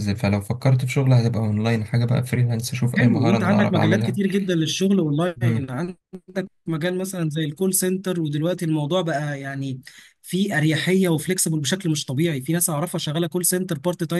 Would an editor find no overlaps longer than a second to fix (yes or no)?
no